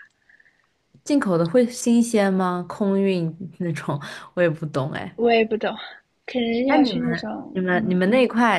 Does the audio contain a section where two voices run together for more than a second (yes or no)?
yes